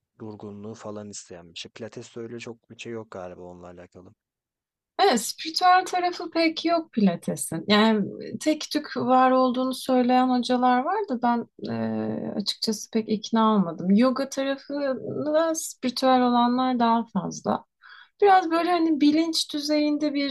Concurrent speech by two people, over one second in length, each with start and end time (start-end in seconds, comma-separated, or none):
none